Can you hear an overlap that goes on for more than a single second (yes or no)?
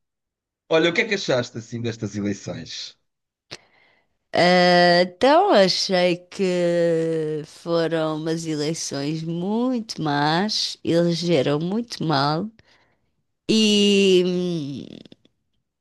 no